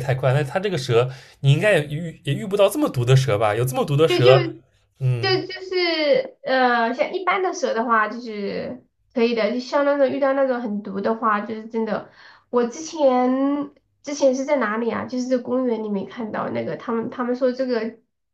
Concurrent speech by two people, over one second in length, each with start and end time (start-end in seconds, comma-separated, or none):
none